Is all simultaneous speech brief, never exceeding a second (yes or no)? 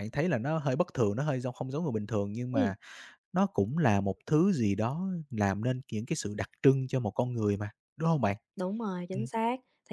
yes